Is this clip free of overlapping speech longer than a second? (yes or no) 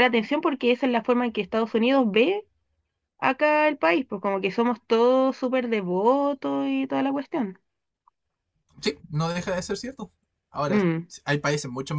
yes